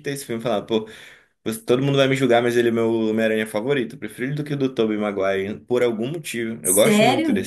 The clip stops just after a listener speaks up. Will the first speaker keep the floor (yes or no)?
yes